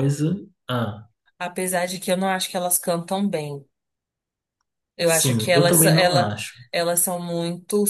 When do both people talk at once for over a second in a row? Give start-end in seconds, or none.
5.0-6.3